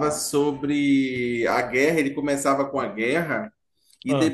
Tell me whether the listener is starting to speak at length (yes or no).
no